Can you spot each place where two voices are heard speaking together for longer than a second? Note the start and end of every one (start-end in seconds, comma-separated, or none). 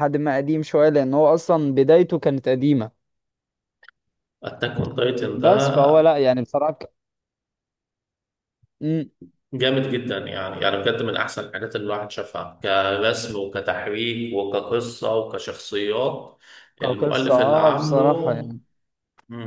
16.8-18.0